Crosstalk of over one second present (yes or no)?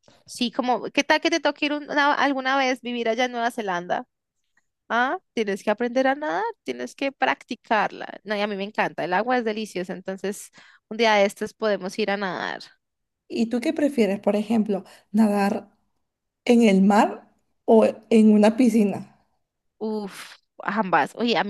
no